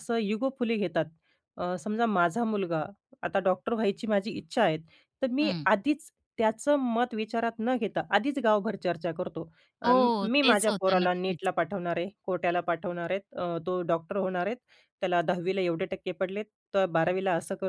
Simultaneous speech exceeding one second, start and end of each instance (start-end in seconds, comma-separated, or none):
9.8-11.5